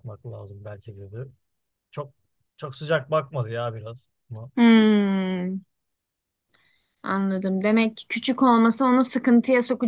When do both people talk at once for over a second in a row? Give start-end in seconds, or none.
none